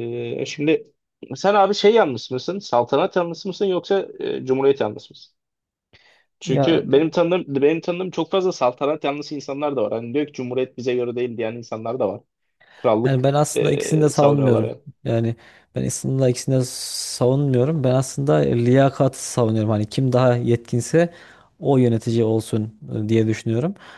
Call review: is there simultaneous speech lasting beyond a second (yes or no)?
yes